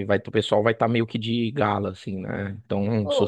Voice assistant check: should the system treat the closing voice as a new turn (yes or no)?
yes